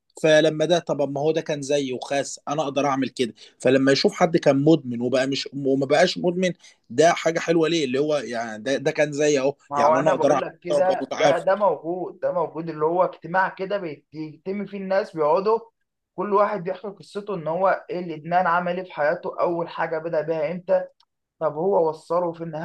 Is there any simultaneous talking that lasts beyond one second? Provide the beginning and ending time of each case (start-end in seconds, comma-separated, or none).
9.7-11.4